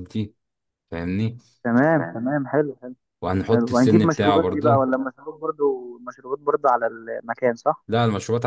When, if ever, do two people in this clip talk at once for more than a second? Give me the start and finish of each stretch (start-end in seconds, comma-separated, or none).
3.5-4.8